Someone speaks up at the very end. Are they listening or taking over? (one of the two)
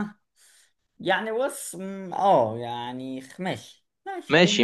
taking over